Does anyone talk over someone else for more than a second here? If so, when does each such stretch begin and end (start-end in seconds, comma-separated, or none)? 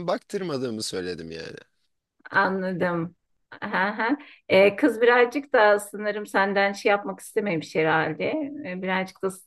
none